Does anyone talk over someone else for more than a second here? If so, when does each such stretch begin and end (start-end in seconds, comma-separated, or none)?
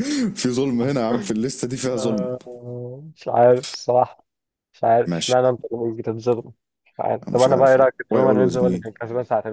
7.2-8.8